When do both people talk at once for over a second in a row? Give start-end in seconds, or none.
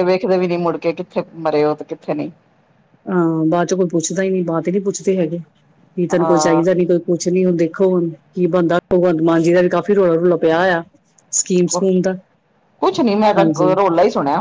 none